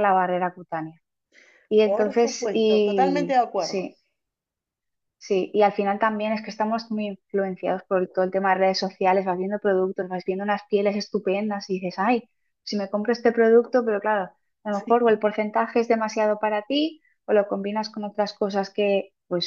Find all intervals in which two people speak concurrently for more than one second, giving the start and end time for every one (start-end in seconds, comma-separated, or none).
1.8-3.9